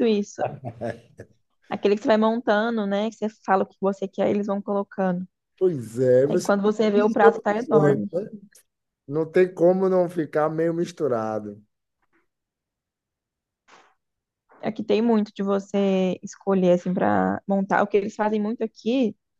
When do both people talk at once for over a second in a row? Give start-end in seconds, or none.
6.2-8.1